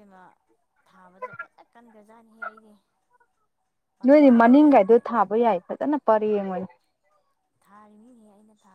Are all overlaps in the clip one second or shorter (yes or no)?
no